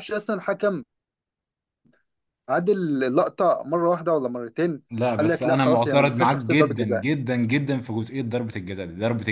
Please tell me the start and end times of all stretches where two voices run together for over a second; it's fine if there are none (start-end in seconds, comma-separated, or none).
5.2-7.0